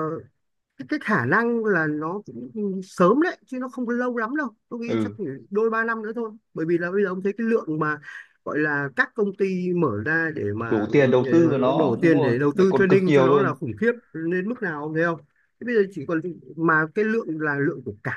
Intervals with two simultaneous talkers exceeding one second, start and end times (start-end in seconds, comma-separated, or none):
10.7-13.6